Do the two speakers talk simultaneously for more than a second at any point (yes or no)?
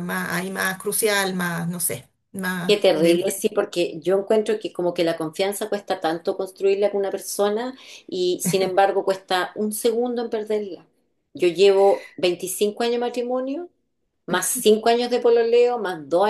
no